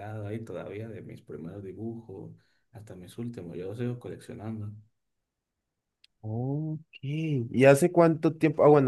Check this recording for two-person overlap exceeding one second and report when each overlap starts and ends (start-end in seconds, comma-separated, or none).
none